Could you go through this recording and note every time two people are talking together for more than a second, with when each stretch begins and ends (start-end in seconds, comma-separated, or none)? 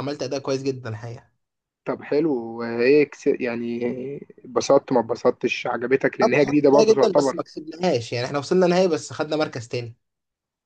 6.2-7.4